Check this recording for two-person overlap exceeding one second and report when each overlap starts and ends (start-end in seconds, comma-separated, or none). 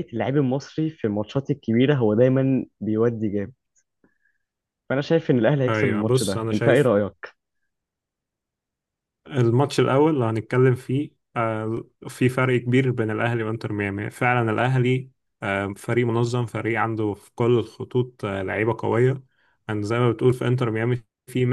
5.7-6.9